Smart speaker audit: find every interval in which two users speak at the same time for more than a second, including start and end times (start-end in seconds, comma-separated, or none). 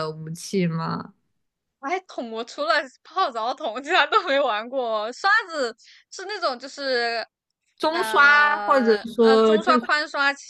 7.9-9.9